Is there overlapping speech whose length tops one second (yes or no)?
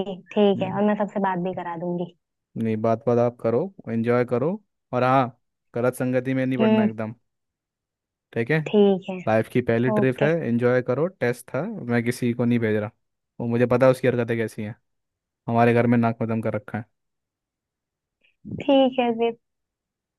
no